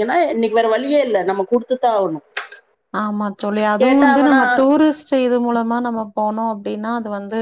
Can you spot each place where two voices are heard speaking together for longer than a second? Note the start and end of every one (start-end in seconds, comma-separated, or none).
none